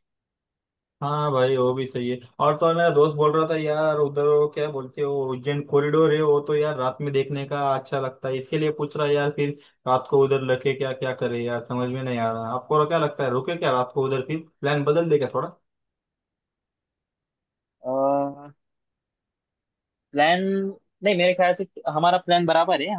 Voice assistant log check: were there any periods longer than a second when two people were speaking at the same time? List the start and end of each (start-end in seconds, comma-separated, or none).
none